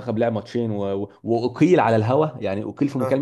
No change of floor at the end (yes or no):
yes